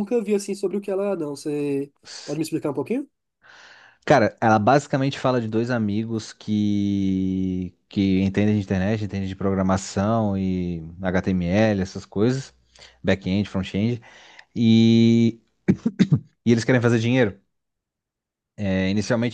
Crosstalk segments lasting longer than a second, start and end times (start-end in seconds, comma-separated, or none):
none